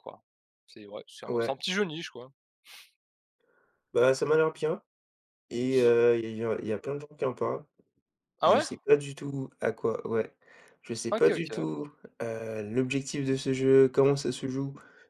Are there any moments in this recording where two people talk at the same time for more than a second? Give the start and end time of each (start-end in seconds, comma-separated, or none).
none